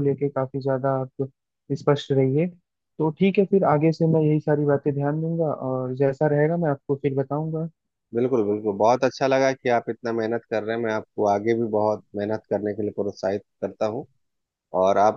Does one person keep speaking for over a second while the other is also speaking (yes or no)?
no